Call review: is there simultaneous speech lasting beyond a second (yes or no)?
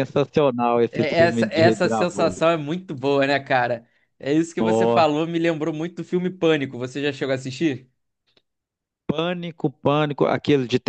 yes